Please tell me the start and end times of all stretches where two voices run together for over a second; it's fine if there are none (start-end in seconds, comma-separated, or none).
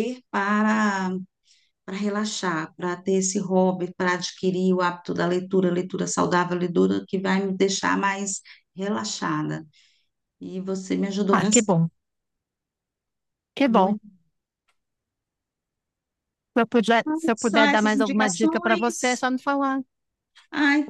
17.4-19.3